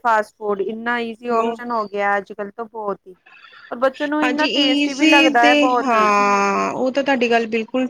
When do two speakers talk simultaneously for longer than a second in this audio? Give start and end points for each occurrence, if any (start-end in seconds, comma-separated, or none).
4.2-6.0